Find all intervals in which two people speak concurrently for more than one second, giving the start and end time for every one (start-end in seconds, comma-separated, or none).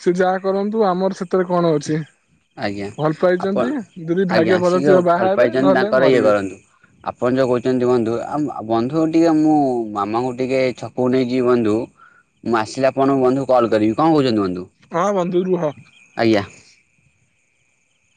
4.4-6.3